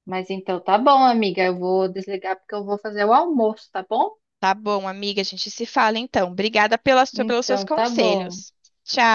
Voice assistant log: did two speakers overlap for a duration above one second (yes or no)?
yes